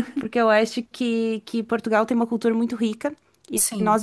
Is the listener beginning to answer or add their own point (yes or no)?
no